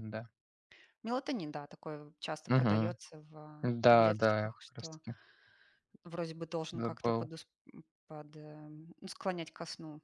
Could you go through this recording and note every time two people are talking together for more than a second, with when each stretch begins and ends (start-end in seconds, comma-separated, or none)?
3.6-5.0